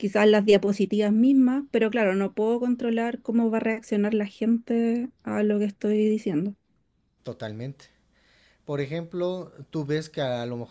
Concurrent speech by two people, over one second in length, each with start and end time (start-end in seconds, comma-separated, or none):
none